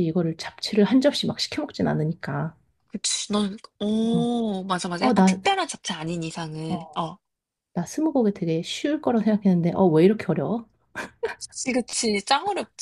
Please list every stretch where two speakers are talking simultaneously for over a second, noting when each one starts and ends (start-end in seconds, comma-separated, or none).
none